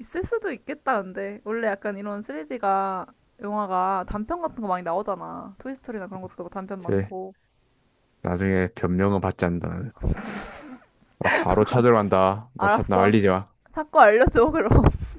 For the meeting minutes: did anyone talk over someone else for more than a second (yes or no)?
no